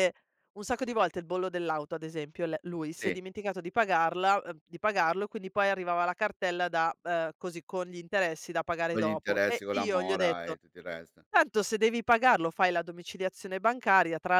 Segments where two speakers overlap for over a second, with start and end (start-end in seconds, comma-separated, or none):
8.9-10.6